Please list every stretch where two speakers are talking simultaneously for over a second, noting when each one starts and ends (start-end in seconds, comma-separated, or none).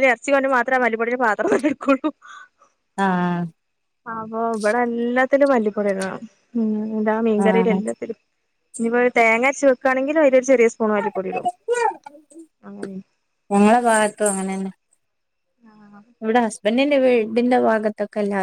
none